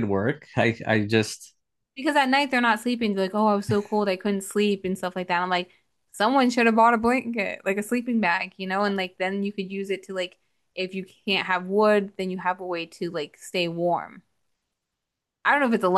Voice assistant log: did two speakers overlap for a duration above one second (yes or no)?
no